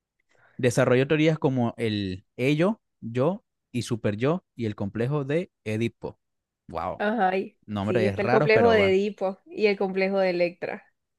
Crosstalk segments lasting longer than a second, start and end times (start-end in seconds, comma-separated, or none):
7.7-9.0